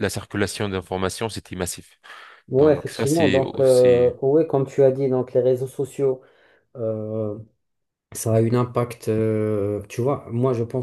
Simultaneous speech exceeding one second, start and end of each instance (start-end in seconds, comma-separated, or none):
2.6-4.1